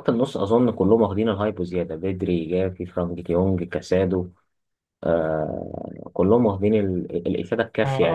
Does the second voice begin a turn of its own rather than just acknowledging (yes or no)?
yes